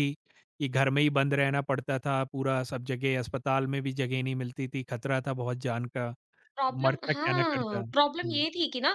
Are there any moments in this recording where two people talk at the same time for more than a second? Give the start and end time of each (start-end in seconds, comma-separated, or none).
6.7-8.4